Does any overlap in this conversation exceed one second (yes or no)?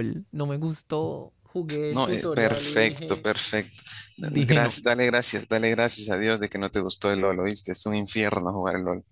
yes